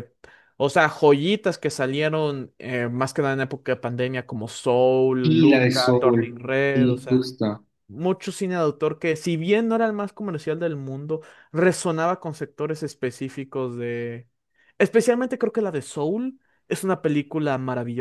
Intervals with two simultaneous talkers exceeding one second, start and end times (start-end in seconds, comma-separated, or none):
5.2-7.3